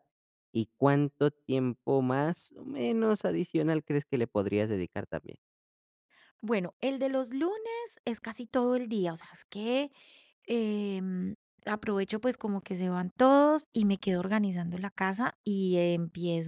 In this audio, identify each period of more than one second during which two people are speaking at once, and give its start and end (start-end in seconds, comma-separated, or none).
none